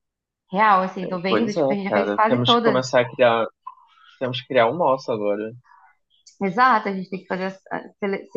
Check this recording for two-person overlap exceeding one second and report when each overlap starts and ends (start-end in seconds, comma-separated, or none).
1.3-2.8